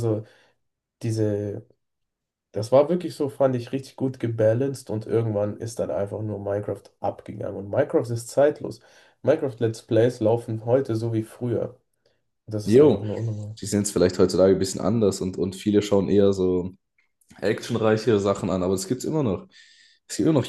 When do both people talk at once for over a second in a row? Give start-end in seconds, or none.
none